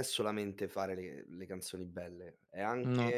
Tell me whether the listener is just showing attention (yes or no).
yes